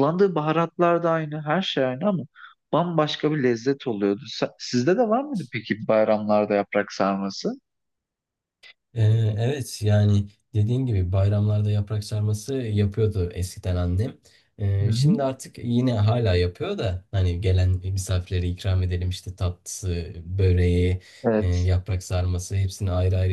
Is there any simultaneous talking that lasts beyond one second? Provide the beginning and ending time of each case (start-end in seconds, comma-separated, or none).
none